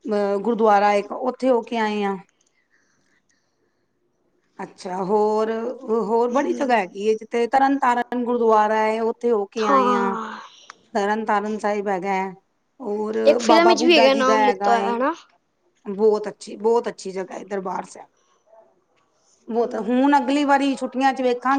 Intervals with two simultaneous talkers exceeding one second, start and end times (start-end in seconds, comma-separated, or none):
13.3-14.9